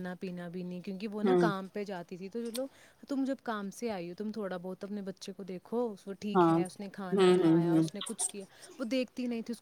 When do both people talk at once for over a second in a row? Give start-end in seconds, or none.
6.3-7.9